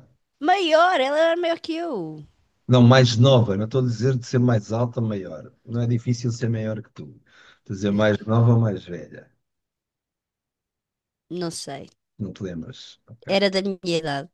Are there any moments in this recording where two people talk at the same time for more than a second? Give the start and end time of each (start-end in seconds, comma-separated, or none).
none